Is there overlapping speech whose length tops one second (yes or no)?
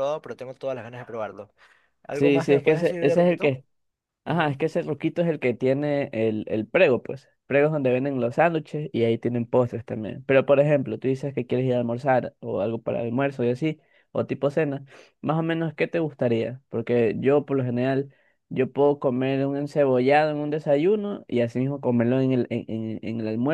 yes